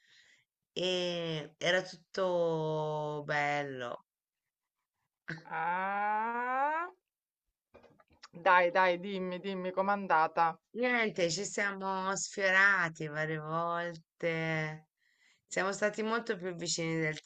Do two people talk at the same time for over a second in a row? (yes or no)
no